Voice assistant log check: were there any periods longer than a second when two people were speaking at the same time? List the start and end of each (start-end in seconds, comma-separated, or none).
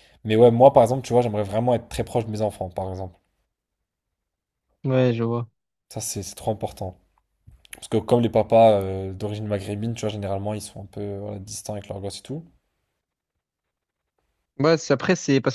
none